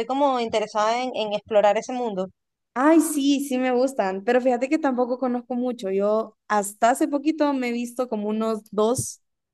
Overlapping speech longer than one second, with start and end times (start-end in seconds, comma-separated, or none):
none